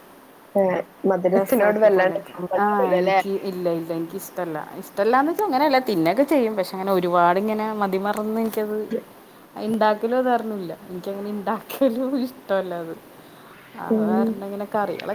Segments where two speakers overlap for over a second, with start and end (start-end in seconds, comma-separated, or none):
1.4-3.2